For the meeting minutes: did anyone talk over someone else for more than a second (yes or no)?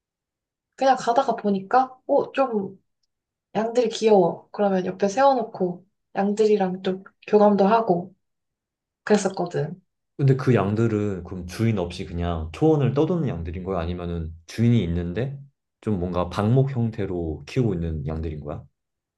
no